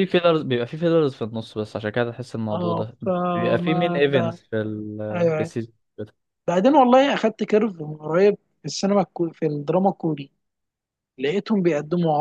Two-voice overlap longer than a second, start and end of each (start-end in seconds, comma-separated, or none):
2.5-4.4